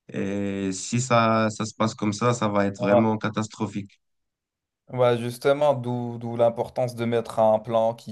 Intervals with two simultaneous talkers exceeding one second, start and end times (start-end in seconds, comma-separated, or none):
none